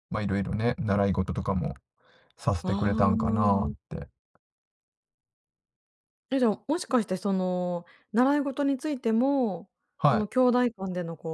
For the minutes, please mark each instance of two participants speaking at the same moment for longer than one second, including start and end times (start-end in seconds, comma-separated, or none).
2.6-3.9